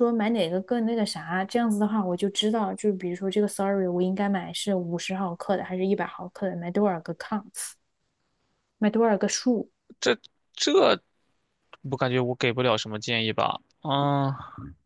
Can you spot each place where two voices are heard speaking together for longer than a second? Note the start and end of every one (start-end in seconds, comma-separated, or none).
none